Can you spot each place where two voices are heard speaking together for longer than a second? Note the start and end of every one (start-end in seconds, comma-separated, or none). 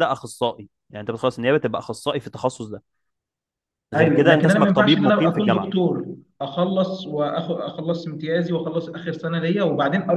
4.0-5.7